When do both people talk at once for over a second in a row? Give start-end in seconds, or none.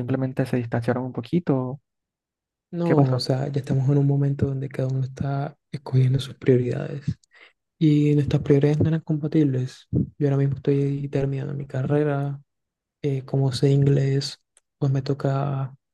none